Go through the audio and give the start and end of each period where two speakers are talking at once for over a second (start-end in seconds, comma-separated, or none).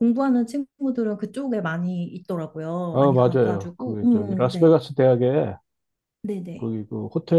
2.9-4.7